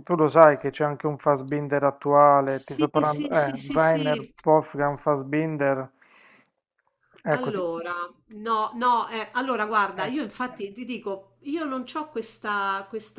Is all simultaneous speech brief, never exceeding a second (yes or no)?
no